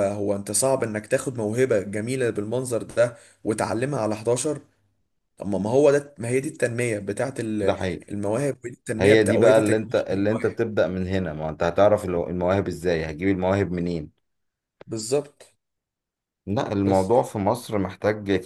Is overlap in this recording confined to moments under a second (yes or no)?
no